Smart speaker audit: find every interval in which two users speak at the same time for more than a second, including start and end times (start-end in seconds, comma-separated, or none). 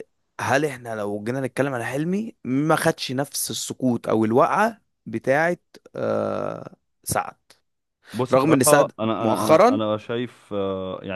8.3-9.8